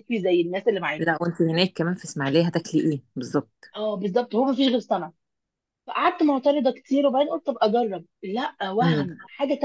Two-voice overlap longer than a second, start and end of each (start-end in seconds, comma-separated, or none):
none